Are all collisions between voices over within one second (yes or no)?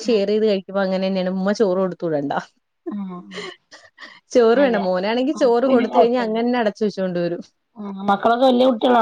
no